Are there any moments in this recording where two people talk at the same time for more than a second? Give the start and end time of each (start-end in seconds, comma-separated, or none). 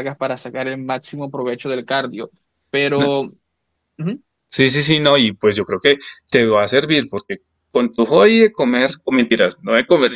none